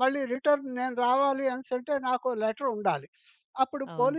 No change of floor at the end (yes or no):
yes